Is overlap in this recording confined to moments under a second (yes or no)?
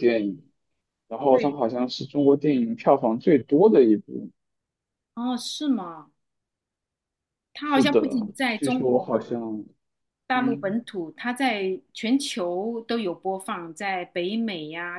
no